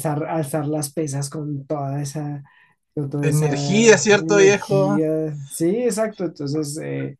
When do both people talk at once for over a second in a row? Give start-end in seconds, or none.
3.2-5.0